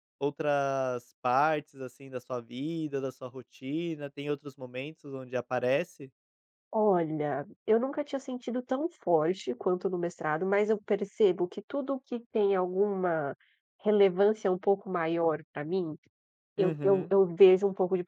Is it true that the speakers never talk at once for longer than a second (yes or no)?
yes